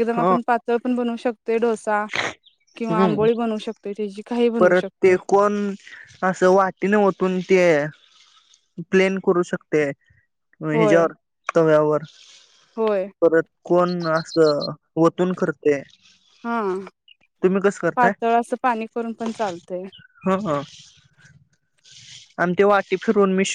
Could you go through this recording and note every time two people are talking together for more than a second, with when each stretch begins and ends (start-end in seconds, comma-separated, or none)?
none